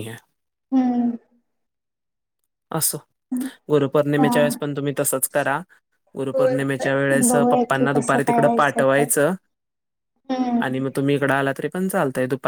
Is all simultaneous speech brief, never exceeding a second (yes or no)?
no